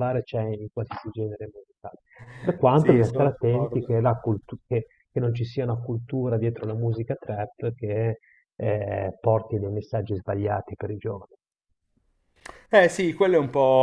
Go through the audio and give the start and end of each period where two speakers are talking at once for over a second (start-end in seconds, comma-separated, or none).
2.7-4.0